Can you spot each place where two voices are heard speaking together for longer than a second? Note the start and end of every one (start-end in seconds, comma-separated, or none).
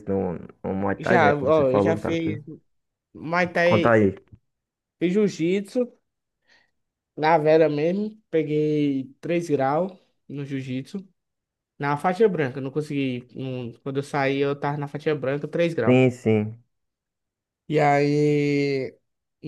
1.0-2.4